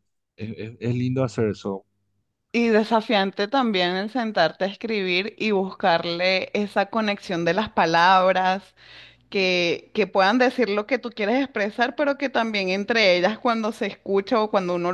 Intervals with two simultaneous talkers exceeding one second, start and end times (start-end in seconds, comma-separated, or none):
none